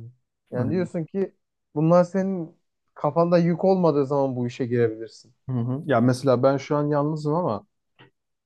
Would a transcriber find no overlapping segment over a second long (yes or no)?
yes